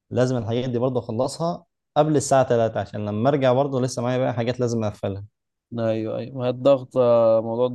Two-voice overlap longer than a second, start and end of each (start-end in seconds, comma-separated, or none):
none